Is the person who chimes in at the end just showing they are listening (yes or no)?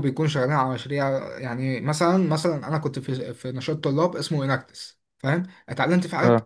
yes